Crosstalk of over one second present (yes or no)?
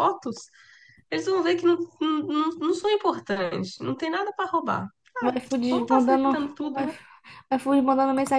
yes